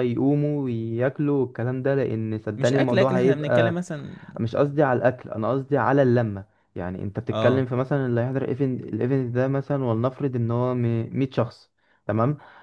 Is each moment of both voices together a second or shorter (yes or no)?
no